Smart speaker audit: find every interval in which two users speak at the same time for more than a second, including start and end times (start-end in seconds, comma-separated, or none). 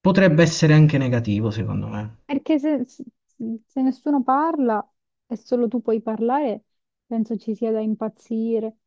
none